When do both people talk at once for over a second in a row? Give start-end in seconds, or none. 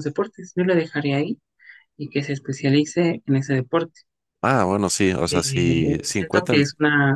5.3-6.6